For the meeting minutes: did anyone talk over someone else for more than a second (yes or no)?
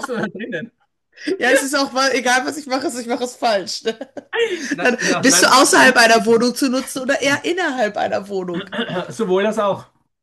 yes